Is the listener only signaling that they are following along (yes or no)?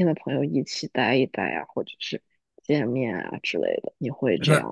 no